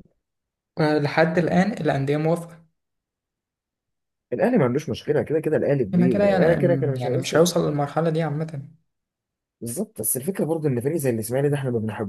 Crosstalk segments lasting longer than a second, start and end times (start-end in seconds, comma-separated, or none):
5.9-7.5